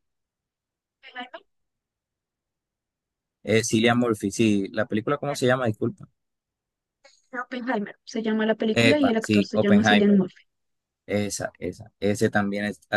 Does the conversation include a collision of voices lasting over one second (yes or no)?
yes